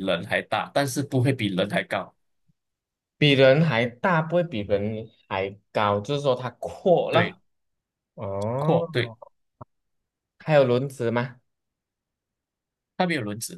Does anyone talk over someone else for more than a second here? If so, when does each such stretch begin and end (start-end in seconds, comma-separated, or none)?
none